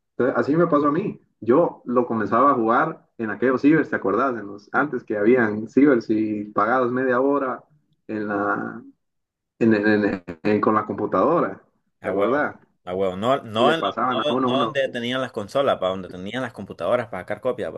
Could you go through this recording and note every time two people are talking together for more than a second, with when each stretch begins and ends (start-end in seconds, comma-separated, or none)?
13.6-14.8